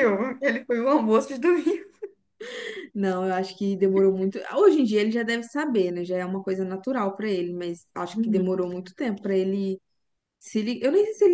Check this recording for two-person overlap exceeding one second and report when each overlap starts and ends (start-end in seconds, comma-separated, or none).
none